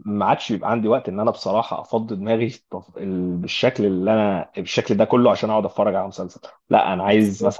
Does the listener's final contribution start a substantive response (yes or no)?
no